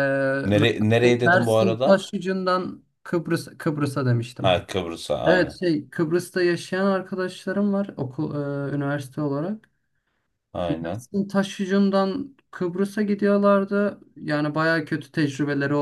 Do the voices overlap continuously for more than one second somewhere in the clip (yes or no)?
yes